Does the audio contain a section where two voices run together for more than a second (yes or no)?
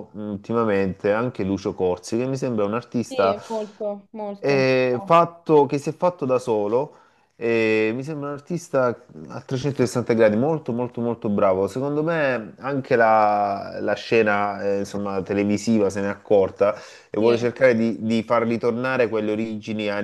no